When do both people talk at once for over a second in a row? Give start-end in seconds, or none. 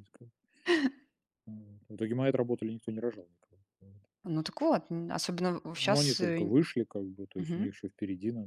none